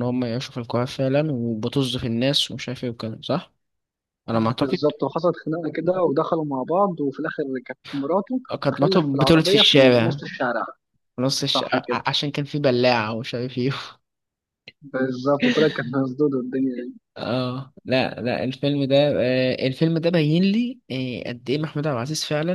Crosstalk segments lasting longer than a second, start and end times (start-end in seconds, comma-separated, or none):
8.6-10.2